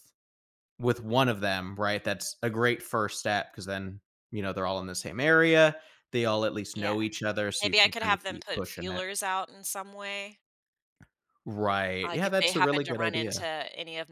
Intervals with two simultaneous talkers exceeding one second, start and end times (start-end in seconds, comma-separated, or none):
7.6-9.0, 12.0-13.5